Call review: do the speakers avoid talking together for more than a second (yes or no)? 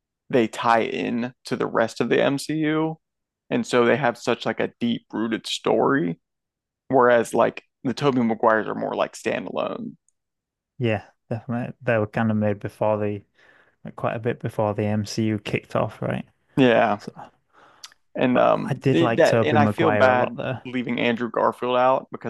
no